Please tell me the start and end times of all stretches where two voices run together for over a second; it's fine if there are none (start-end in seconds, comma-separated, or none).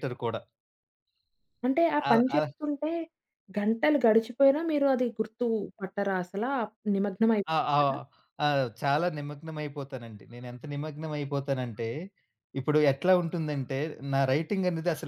none